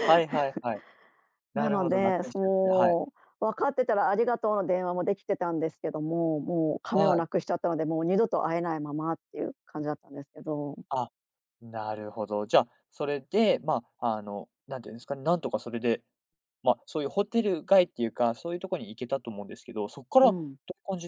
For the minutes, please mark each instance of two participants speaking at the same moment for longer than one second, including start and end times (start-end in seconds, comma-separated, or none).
1.5-3.0